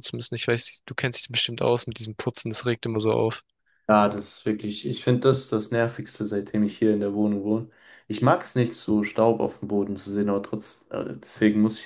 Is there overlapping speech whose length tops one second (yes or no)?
no